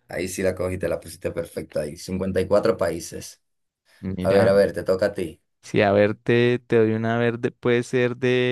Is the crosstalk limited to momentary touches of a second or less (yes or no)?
yes